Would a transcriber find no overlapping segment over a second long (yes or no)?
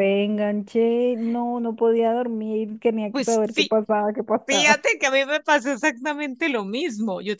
yes